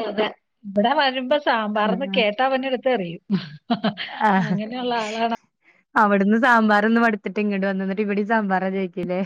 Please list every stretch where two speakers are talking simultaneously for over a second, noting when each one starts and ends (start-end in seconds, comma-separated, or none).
none